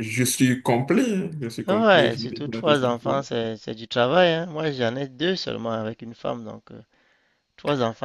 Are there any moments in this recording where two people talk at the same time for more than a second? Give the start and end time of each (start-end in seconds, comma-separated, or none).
1.7-3.2